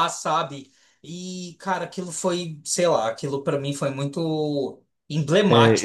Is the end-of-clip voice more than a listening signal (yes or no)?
yes